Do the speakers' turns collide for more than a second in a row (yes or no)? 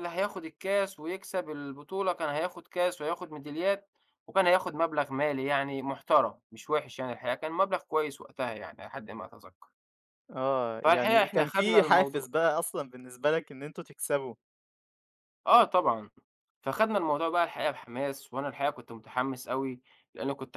yes